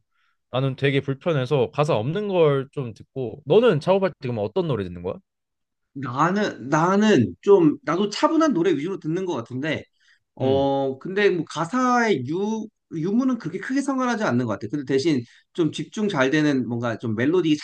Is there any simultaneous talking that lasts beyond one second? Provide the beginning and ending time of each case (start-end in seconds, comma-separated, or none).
none